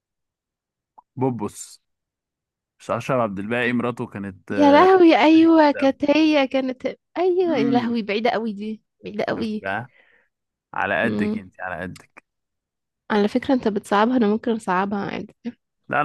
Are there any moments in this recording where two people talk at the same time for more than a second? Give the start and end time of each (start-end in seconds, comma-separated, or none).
none